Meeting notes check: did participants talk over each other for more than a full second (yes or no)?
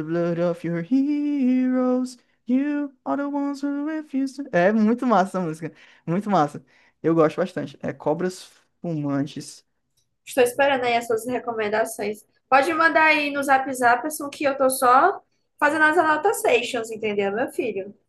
no